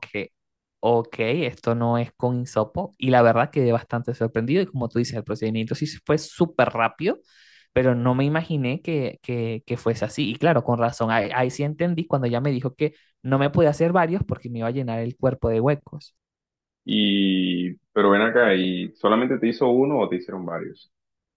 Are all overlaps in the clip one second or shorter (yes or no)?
yes